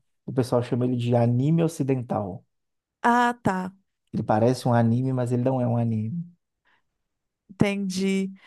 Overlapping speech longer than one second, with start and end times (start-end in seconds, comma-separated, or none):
none